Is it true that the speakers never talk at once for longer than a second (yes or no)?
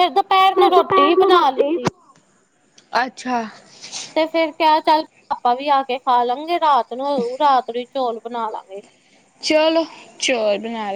no